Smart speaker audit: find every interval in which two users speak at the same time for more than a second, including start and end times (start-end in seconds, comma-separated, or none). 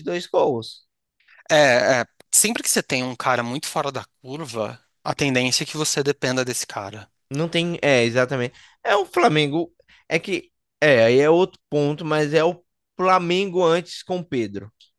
none